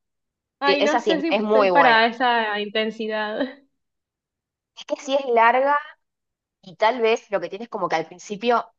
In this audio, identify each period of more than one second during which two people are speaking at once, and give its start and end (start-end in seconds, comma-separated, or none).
0.7-2.1